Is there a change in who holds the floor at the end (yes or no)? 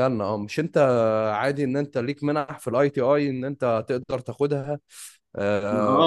yes